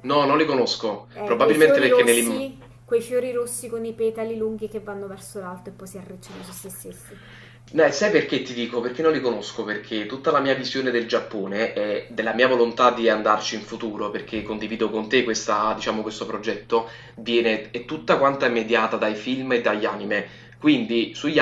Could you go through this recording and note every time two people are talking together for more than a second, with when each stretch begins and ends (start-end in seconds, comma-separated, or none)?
1.1-2.5